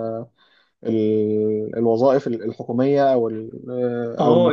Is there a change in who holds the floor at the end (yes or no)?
yes